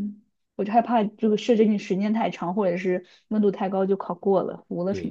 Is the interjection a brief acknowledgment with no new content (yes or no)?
no